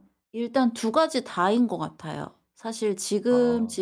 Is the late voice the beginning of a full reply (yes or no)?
no